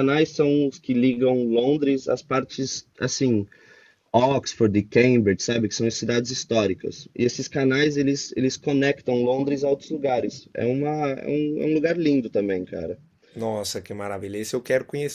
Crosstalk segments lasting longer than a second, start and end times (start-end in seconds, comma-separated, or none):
none